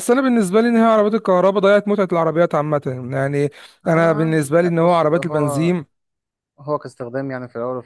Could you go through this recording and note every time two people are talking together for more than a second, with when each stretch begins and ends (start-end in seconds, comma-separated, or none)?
3.9-5.7